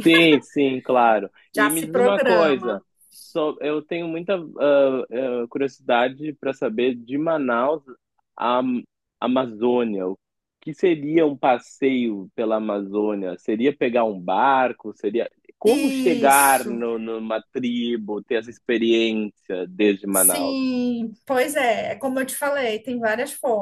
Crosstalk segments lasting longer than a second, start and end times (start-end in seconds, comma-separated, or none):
1.6-2.8, 15.6-16.9